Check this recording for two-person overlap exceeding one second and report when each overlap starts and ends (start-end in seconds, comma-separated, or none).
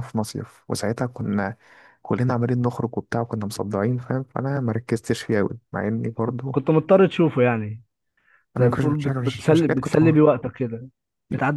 8.6-10.2